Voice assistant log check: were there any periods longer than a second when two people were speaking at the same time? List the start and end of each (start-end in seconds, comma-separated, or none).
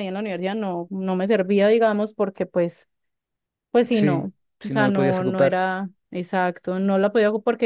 3.9-5.7